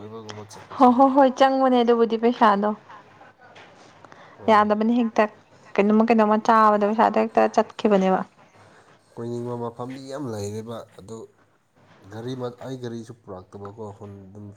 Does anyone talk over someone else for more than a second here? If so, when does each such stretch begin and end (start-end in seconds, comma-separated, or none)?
none